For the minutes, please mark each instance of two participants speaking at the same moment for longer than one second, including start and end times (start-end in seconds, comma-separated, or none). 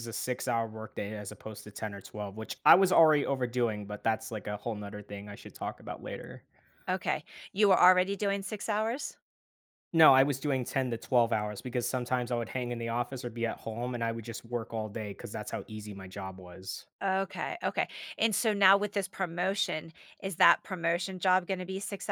none